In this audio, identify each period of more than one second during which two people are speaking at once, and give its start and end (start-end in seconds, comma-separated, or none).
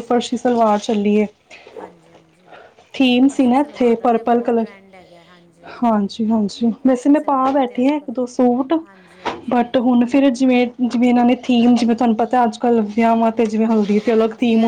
6.8-8.1